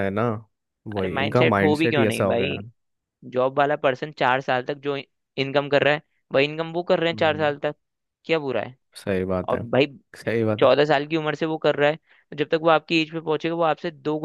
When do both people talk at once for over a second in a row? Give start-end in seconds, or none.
1.0-2.6